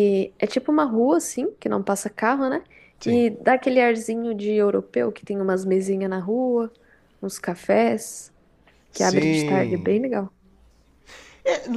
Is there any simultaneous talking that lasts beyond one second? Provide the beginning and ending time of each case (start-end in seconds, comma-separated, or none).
8.9-10.2